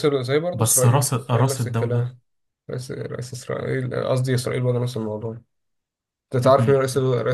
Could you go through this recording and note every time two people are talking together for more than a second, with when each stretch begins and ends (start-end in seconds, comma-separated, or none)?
0.5-2.1